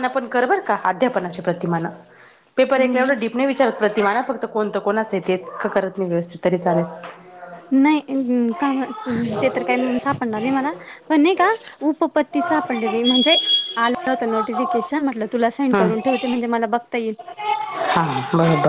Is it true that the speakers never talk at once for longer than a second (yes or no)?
yes